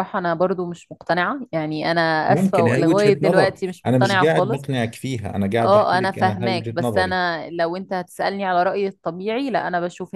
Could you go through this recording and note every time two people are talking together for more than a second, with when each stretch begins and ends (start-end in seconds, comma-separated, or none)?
2.2-4.7, 5.6-7.2